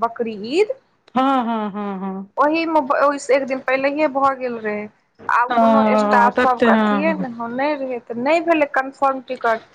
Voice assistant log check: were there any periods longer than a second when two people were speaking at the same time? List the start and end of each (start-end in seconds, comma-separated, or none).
5.5-7.3